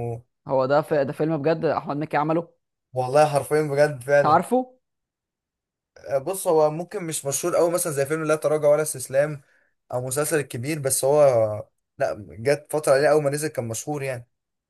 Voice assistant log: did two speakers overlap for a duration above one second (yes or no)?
no